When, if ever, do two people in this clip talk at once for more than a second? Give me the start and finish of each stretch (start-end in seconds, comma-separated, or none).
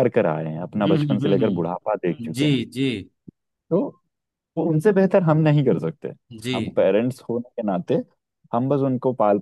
0.8-2.6